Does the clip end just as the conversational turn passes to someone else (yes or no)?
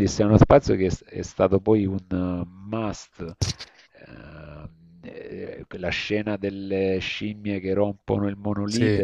no